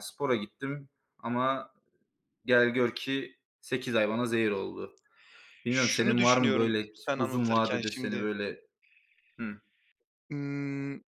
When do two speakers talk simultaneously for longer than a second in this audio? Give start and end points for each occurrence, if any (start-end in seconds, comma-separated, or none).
5.7-8.3